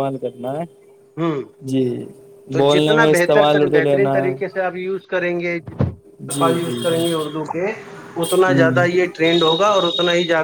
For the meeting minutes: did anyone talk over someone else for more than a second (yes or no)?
yes